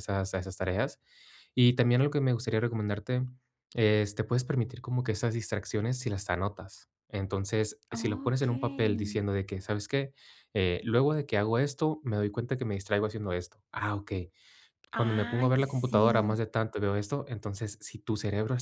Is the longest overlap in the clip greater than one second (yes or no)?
yes